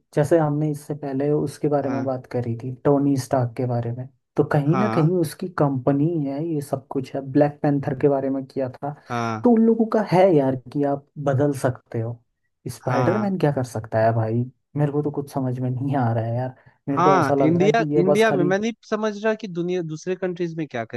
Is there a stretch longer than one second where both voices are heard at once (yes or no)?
yes